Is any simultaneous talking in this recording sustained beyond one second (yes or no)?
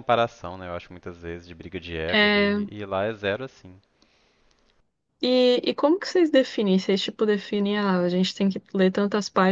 no